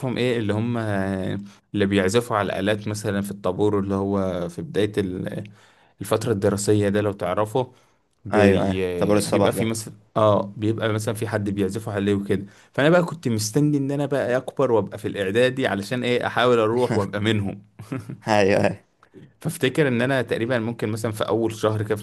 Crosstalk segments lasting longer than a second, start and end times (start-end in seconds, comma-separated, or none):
8.3-9.7